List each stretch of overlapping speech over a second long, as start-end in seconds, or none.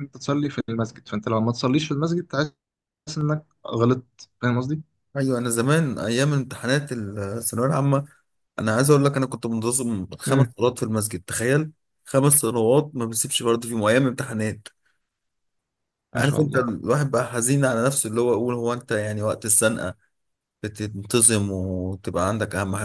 none